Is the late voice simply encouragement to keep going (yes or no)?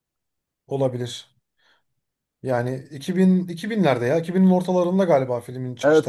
no